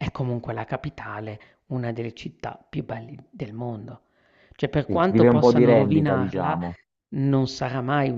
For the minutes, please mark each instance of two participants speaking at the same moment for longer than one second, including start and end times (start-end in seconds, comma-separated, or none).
4.8-6.6